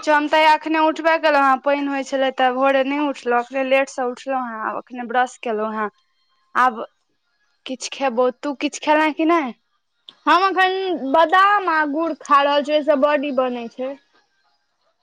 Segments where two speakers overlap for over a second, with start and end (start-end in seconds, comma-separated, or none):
none